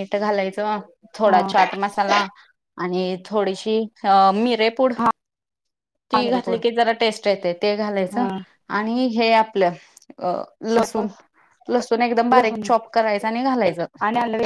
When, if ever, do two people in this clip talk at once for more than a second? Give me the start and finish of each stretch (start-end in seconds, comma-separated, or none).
none